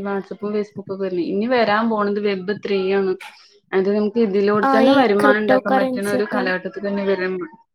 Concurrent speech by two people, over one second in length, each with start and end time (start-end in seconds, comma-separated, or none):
4.7-6.5